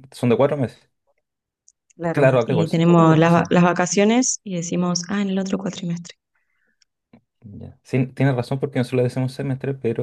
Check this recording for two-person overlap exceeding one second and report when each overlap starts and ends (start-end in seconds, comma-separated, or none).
2.1-3.5